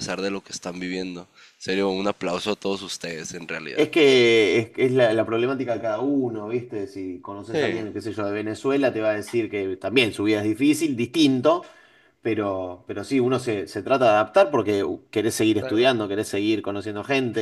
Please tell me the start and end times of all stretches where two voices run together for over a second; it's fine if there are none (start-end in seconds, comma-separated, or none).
none